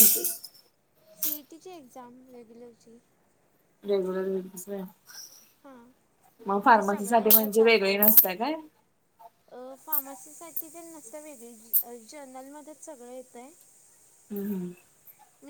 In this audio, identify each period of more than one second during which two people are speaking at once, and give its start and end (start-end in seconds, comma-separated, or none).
6.7-8.2